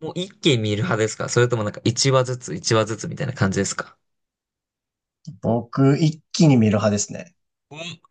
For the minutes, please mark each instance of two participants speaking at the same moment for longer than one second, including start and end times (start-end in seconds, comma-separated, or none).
none